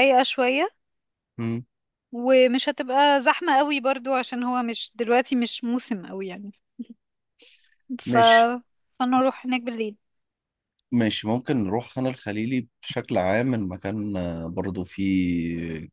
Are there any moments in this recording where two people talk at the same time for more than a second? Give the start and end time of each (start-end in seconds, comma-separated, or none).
none